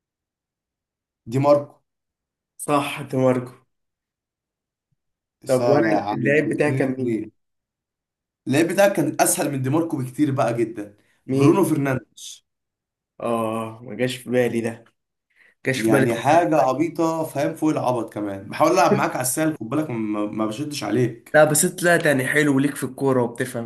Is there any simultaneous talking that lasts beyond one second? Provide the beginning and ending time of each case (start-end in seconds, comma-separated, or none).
5.5-7.2